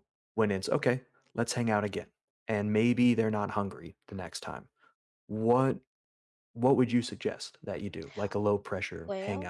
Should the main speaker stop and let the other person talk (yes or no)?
yes